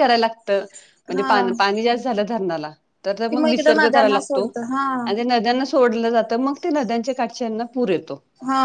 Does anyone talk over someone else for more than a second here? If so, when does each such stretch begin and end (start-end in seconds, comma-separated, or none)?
3.3-4.5